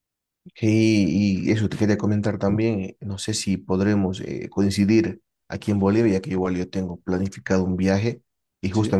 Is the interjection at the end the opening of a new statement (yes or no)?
no